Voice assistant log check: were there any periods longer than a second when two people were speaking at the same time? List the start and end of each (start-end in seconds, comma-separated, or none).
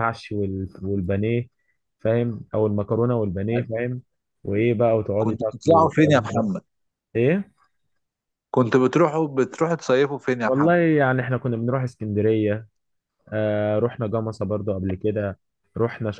5.2-6.5